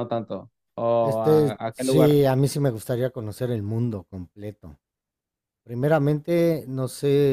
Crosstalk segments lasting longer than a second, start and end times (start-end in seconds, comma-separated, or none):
1.0-2.2